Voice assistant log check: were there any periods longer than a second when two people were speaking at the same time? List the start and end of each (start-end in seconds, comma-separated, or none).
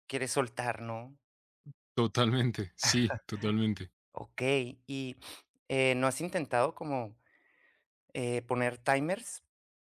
none